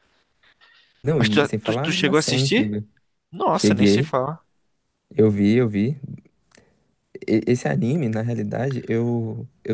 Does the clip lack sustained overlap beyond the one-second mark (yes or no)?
no